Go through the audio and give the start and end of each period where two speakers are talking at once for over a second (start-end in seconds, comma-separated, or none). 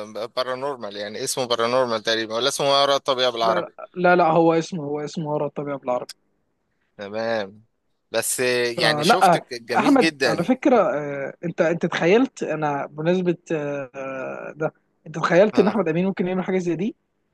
8.8-10.5